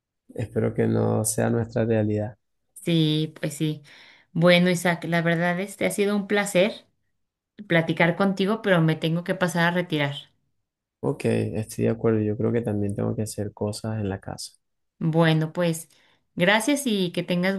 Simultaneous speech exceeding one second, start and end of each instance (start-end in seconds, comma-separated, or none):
none